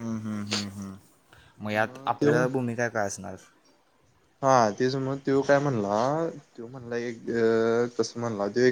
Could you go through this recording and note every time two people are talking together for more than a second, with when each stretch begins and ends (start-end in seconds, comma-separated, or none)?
none